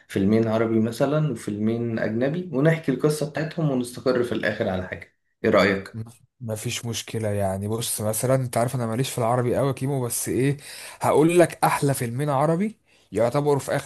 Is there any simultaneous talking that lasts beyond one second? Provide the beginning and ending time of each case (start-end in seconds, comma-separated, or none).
none